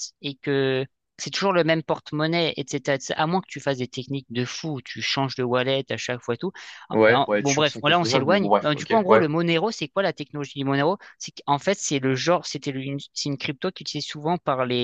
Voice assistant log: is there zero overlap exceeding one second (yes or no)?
no